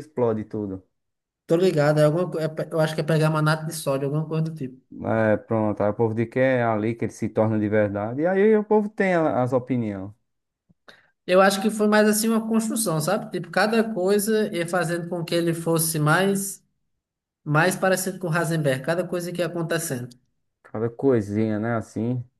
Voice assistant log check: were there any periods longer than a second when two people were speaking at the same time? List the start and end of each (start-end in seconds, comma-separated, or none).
none